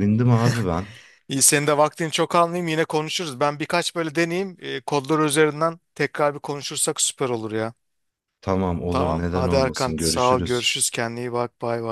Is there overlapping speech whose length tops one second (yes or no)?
yes